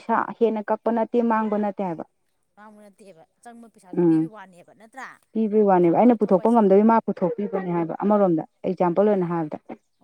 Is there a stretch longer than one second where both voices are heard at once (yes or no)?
no